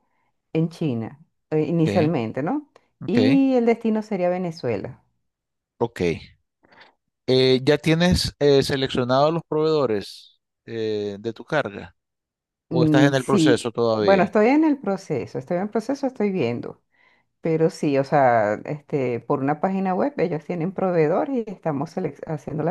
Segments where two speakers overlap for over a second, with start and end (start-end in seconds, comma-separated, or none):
12.7-14.3